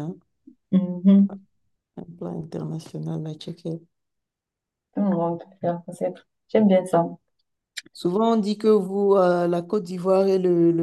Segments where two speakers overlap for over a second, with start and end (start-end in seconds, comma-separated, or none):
none